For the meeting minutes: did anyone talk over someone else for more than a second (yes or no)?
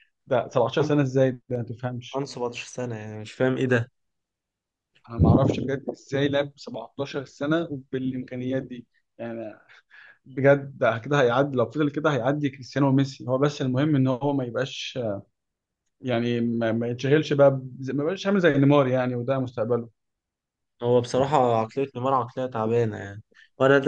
no